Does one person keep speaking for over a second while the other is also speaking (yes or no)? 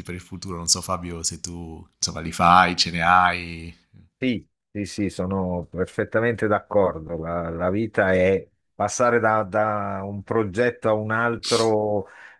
no